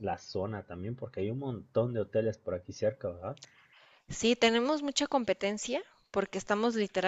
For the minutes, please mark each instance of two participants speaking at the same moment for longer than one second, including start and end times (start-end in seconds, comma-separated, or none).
none